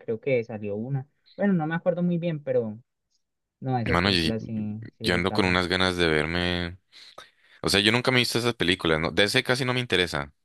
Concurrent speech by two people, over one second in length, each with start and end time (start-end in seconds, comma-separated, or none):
none